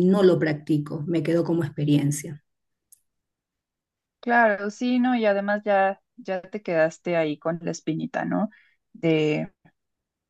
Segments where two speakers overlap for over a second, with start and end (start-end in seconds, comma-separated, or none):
none